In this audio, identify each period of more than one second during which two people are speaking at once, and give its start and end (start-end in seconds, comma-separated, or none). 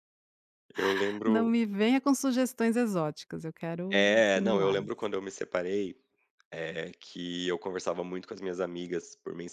3.9-5.1